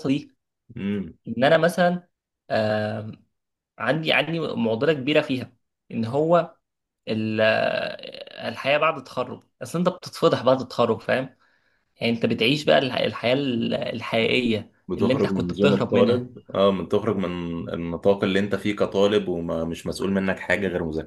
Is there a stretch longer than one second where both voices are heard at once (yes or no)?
yes